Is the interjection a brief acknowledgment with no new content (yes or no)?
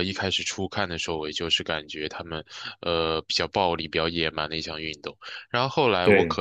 yes